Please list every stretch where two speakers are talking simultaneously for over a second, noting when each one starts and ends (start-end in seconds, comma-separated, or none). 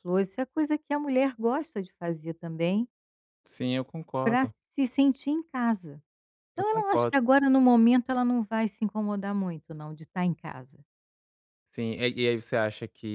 none